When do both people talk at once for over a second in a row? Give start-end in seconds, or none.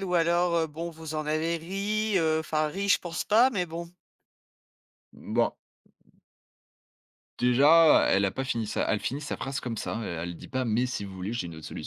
none